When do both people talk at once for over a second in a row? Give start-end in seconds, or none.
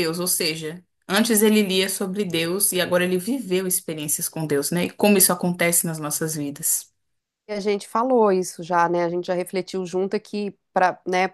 none